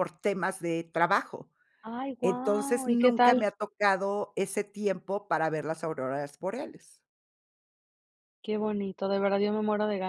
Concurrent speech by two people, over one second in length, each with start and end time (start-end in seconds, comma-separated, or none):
2.2-3.5